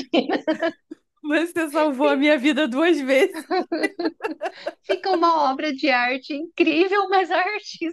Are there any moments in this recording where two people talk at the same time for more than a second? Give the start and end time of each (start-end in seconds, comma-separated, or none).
none